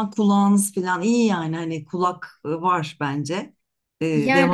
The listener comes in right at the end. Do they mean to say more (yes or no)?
yes